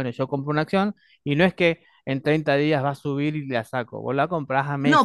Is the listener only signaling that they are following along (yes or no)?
no